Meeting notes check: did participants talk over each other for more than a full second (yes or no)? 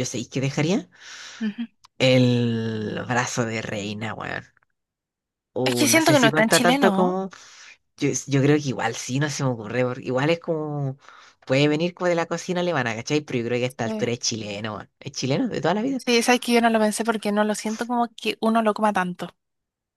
yes